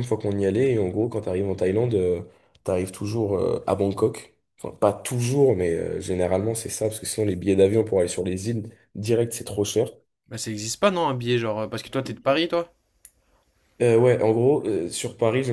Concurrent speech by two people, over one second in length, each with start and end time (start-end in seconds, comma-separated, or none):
none